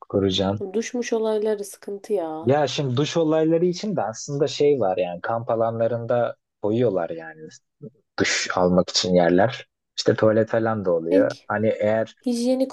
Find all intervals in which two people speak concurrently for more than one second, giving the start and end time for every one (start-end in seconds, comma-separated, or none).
none